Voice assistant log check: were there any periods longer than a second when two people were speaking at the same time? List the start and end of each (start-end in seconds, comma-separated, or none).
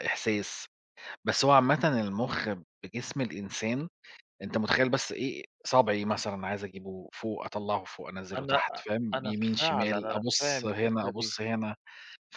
8.4-11.3